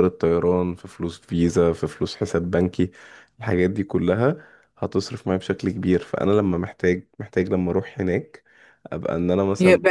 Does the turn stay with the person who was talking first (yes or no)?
no